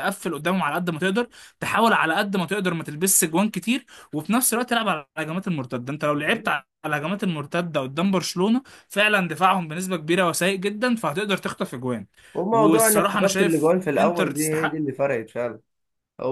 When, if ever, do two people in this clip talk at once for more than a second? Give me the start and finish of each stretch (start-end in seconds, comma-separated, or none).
12.5-14.8